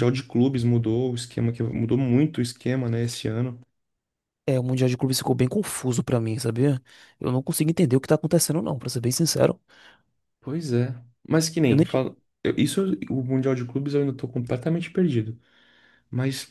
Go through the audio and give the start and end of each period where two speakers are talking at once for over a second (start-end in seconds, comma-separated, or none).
none